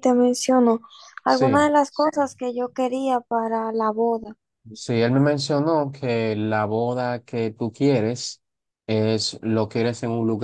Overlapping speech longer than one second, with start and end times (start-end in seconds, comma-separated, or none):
none